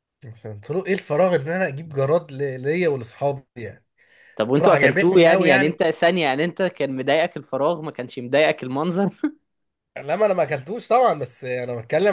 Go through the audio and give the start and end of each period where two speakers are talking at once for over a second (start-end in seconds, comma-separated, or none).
4.5-5.8